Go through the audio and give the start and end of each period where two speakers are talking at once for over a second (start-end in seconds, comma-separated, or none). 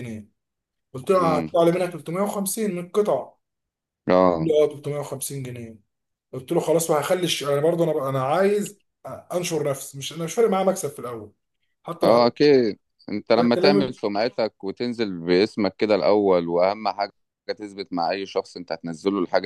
none